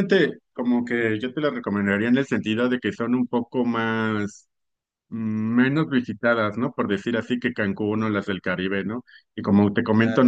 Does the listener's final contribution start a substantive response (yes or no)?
no